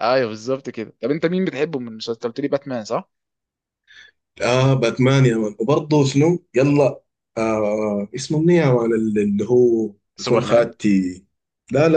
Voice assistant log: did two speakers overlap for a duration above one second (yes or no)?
no